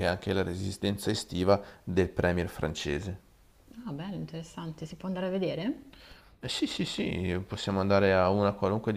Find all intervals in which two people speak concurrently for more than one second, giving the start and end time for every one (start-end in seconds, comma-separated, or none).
none